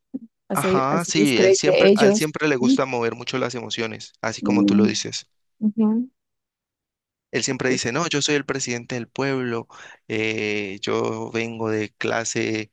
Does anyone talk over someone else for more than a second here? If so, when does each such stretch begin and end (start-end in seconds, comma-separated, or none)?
0.5-2.8